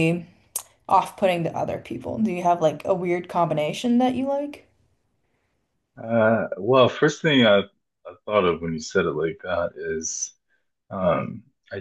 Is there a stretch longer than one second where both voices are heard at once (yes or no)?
no